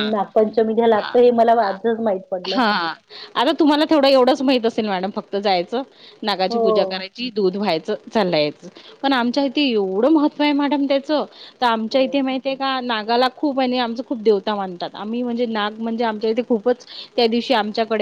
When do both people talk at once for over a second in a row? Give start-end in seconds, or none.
none